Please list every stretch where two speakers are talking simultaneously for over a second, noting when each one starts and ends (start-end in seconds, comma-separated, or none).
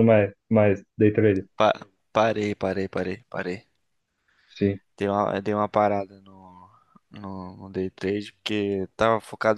none